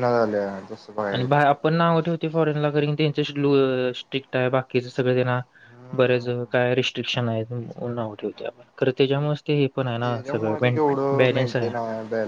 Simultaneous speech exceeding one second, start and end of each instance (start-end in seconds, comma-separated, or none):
10.0-11.7